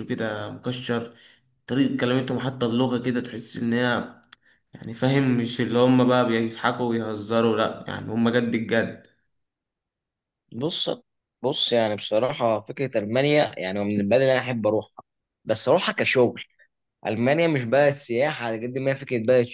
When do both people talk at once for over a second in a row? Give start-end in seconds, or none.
none